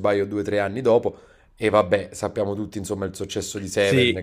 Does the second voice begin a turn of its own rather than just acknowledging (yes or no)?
yes